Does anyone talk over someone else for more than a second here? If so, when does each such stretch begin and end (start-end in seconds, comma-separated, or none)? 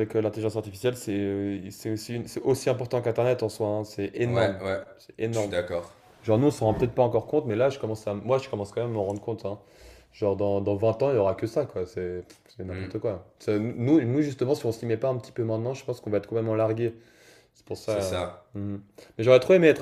none